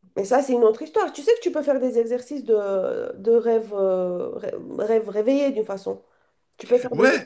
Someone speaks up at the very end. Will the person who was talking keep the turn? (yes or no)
no